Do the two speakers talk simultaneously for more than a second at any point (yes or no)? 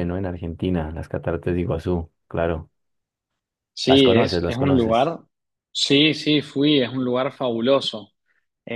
yes